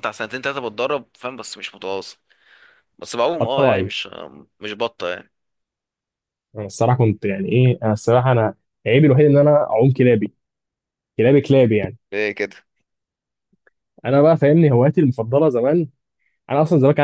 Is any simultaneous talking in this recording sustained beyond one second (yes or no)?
no